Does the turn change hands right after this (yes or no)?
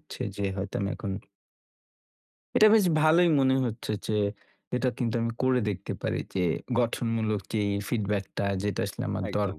no